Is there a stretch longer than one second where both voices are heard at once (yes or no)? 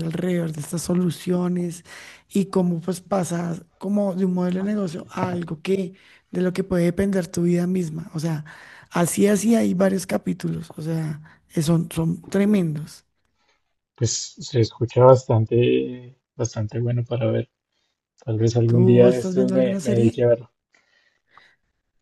yes